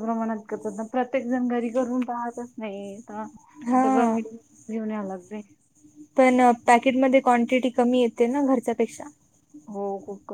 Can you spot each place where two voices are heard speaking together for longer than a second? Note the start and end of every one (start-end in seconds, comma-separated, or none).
none